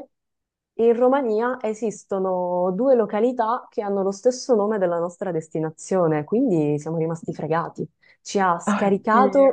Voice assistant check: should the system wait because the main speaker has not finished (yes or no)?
yes